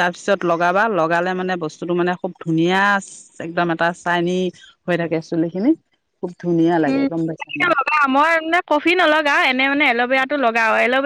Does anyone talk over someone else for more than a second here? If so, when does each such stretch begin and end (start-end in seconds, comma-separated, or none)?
none